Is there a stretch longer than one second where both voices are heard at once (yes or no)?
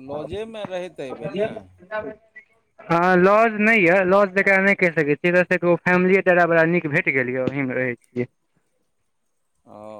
no